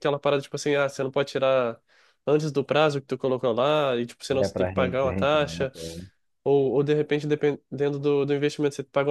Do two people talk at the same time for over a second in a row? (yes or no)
yes